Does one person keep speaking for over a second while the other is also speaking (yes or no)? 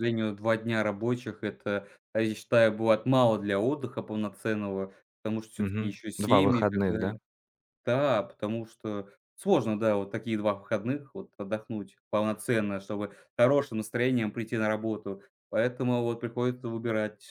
yes